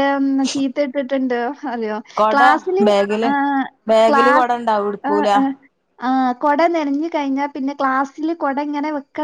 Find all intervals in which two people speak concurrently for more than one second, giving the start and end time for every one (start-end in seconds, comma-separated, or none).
none